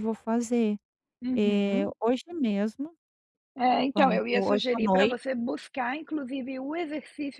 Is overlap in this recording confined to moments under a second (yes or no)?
no